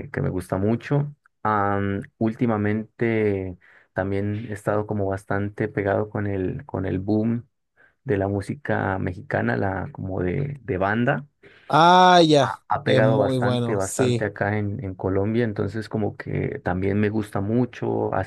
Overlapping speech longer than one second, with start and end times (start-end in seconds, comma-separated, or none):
12.4-14.3